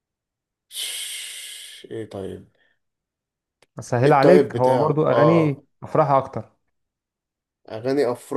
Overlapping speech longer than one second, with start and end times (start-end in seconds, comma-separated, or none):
4.0-5.6